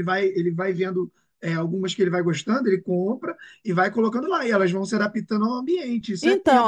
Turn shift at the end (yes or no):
yes